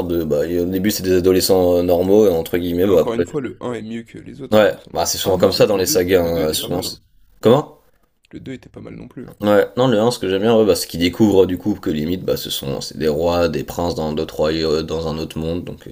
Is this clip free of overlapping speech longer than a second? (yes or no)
no